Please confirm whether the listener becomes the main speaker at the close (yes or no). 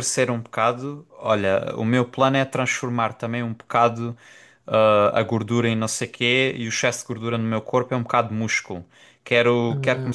no